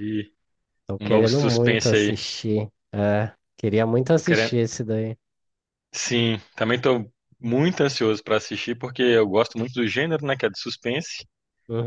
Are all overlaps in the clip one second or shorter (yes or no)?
no